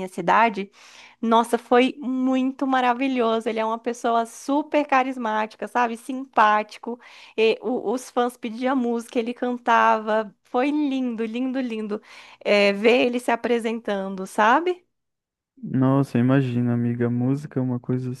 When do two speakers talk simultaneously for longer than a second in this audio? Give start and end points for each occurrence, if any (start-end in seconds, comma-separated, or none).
none